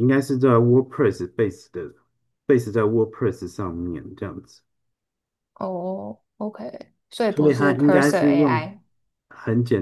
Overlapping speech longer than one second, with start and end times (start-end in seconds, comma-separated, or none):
7.3-8.7